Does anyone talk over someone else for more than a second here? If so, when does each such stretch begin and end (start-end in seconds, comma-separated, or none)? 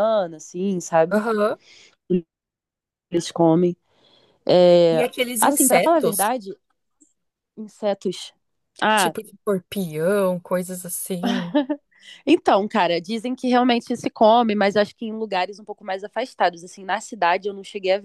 4.9-6.3